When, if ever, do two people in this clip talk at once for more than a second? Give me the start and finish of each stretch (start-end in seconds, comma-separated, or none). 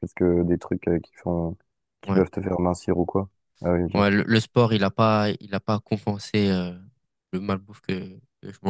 none